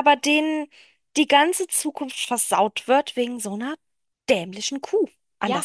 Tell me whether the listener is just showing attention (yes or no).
no